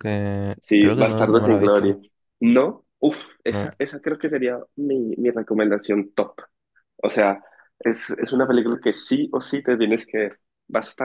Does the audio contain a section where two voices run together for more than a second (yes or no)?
yes